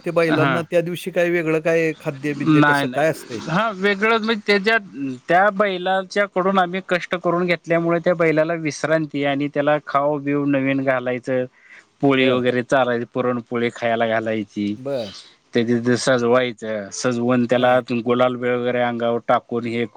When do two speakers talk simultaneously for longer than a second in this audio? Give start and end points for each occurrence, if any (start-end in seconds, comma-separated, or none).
none